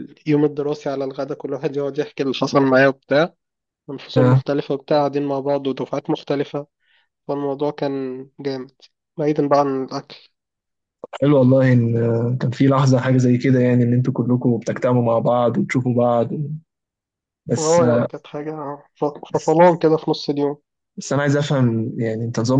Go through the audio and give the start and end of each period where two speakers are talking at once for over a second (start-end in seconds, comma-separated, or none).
none